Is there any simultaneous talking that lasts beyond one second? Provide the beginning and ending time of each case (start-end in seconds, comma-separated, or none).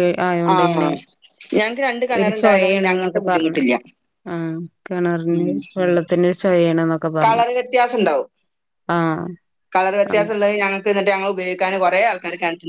2.2-3.6